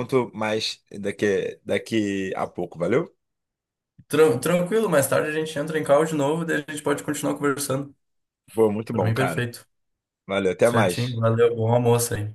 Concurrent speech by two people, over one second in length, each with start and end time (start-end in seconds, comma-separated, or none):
none